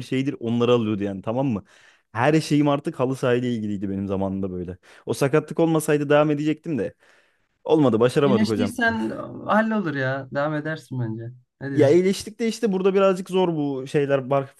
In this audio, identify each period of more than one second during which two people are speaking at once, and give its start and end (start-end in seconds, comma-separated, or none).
none